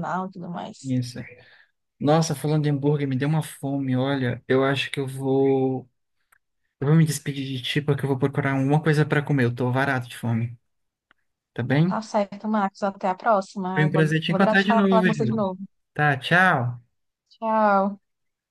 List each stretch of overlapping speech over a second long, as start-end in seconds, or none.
13.7-15.4